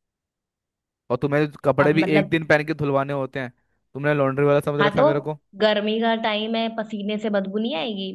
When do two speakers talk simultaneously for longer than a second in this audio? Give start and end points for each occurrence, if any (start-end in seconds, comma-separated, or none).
none